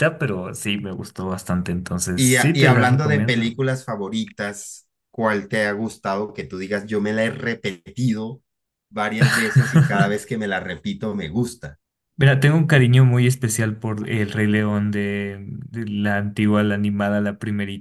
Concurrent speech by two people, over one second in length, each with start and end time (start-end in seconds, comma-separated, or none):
2.1-3.6